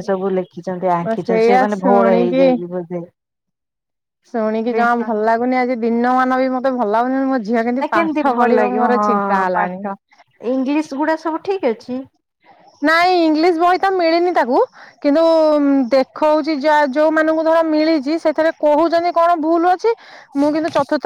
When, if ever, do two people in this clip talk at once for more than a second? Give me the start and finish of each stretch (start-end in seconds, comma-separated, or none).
1.1-2.4